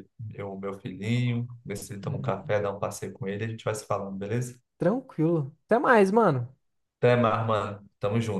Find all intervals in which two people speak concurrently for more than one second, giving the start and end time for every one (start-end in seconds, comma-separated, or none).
none